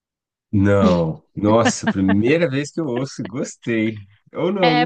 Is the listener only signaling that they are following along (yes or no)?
no